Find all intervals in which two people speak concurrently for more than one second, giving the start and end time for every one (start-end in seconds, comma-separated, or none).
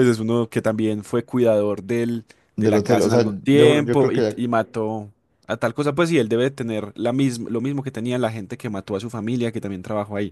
2.5-4.4